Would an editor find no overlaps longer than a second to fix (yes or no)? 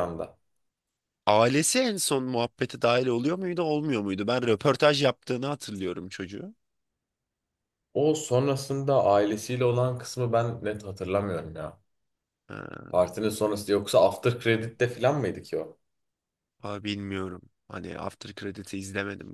yes